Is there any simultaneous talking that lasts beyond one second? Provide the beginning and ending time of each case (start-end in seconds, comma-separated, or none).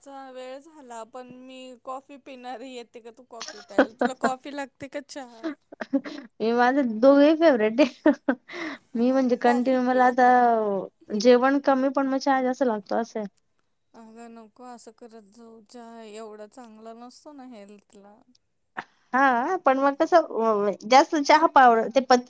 9.0-10.3